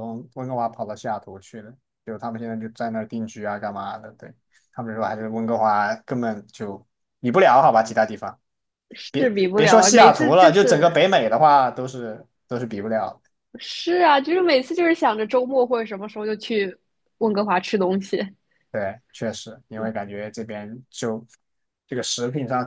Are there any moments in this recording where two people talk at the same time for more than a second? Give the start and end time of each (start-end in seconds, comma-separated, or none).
9.6-11.0